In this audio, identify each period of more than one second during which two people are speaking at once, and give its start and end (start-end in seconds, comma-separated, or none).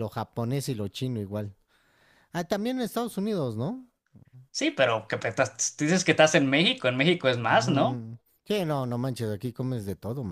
none